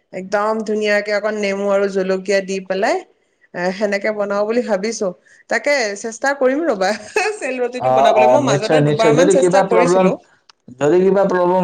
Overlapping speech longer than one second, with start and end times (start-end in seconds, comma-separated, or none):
7.9-10.1